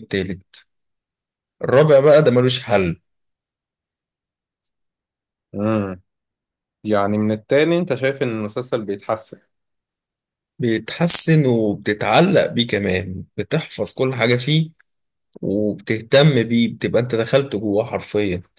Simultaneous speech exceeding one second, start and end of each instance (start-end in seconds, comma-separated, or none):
none